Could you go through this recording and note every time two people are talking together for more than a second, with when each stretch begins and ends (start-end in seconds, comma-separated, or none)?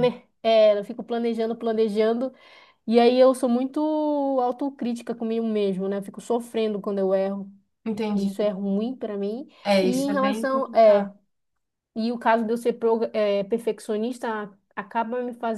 9.6-11.1